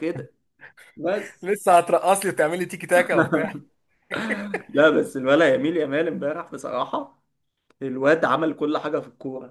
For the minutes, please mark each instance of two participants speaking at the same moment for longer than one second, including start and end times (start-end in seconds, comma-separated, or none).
none